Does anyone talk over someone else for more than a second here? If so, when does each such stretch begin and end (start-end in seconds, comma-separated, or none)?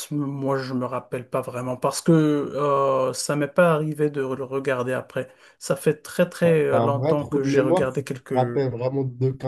6.4-8.6